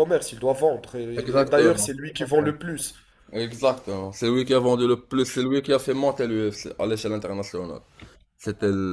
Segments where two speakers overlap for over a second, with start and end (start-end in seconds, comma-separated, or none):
1.1-2.5